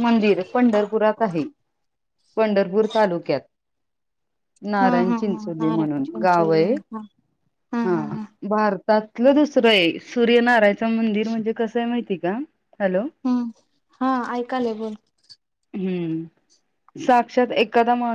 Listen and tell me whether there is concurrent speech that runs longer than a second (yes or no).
yes